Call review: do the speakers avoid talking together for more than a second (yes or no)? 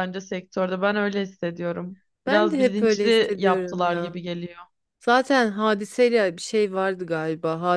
no